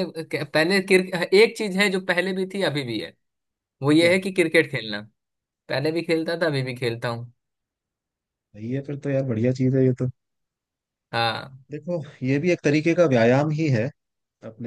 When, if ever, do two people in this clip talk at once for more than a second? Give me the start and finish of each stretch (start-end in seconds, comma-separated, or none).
none